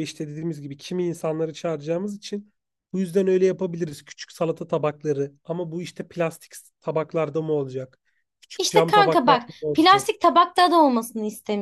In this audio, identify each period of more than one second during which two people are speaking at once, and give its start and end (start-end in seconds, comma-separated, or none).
8.6-10.1